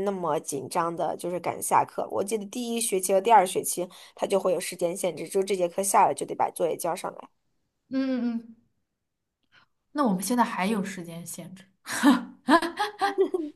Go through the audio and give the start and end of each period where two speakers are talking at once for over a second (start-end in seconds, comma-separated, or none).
none